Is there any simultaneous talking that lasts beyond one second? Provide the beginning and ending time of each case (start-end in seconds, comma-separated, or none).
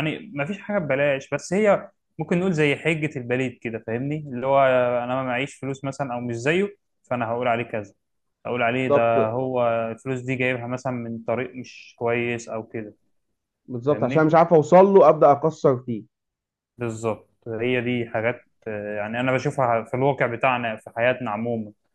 none